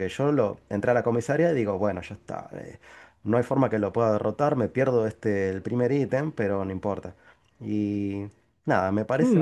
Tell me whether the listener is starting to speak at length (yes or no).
yes